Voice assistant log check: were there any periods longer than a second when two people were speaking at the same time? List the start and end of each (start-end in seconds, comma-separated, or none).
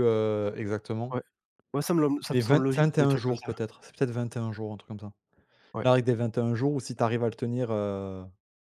2.3-3.5